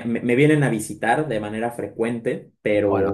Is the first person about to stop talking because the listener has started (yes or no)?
yes